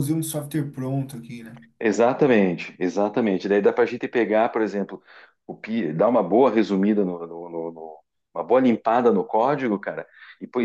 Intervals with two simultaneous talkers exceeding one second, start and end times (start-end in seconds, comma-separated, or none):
none